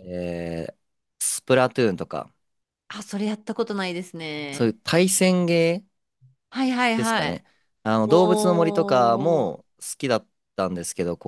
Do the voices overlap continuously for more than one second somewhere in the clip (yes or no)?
yes